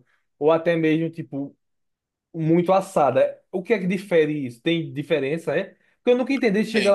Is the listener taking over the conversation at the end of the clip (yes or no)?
no